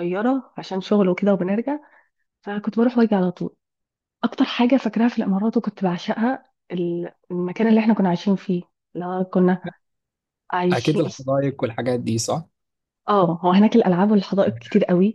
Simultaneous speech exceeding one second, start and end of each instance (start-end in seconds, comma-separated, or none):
none